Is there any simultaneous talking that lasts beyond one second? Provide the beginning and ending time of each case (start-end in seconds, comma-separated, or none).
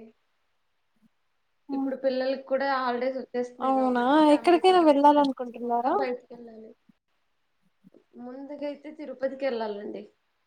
3.7-5.9